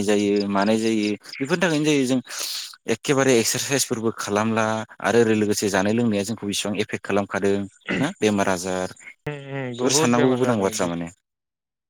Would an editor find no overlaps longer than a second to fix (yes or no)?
no